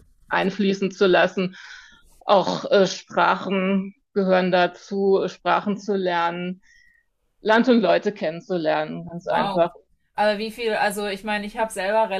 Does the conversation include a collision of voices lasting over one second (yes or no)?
no